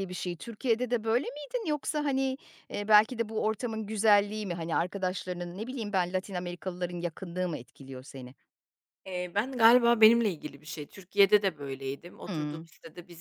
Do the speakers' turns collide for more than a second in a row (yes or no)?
no